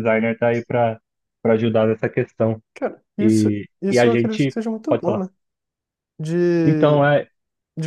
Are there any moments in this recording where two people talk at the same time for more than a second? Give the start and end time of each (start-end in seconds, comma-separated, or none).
3.2-5.2